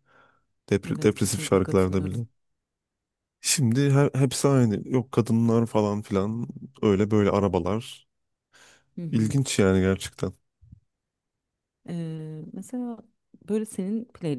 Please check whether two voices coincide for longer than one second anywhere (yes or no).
yes